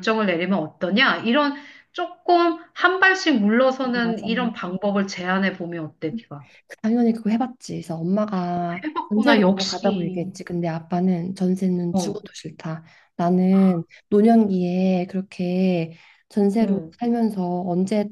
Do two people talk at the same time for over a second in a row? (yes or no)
yes